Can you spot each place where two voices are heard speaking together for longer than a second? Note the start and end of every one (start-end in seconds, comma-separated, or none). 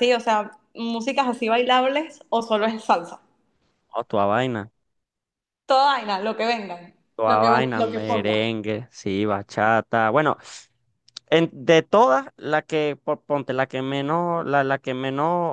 7.1-8.4